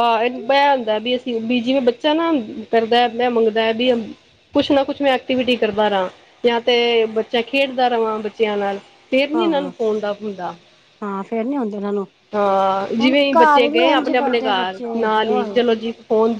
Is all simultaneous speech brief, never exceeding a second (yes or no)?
no